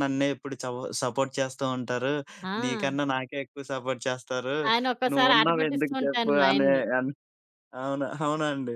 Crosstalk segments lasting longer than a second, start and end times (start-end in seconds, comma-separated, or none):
5.1-6.8